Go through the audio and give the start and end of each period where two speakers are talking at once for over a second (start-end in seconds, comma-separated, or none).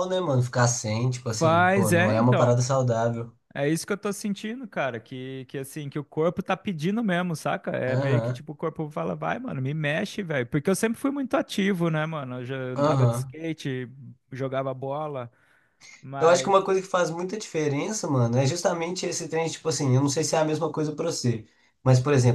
1.3-2.5